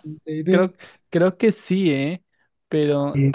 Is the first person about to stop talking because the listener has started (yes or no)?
yes